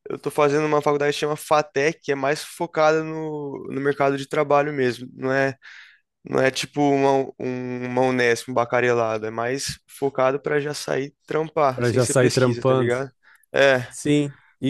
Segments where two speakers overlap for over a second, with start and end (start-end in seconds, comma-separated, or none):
11.7-12.9